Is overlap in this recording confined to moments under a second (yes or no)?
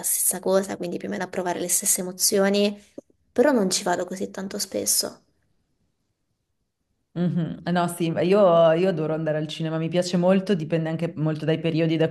yes